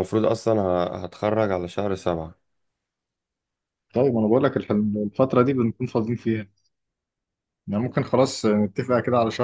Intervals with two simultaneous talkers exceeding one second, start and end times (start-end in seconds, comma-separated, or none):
none